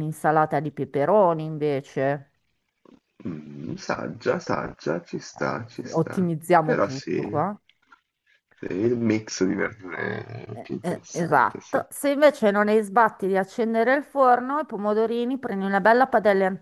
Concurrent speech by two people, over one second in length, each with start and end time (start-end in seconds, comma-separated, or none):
5.4-7.4, 10.5-11.8